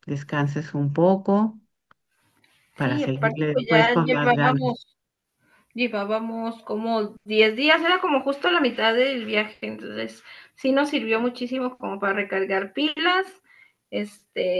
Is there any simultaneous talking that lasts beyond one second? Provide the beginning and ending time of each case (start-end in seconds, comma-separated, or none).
2.8-4.8